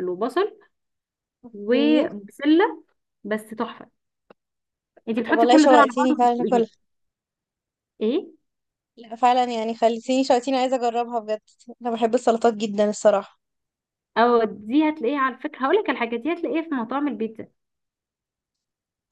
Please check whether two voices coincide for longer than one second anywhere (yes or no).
yes